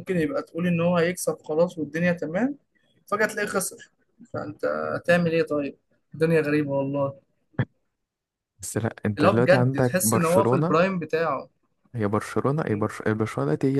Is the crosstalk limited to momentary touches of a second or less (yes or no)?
no